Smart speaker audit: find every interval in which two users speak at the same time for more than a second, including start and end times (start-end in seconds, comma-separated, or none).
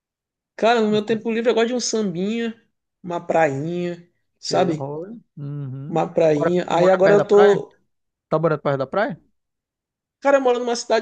5.9-7.7